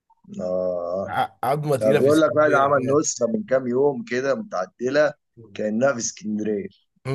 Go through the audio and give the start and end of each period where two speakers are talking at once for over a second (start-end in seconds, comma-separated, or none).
1.8-3.1